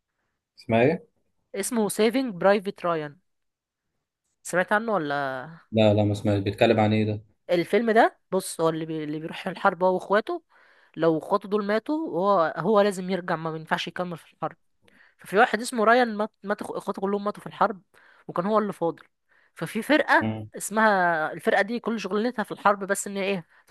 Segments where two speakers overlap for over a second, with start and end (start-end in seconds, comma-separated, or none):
none